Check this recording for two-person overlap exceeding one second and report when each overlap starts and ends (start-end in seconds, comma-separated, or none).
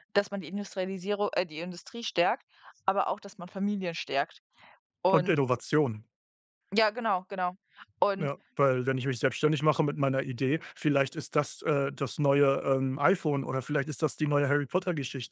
none